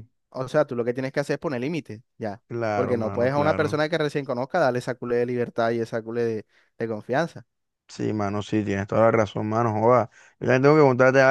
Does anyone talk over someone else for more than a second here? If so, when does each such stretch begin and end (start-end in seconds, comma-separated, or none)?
2.5-3.8